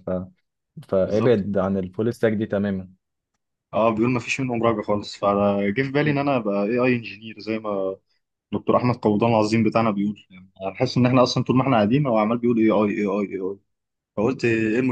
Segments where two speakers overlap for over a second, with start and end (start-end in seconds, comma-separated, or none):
none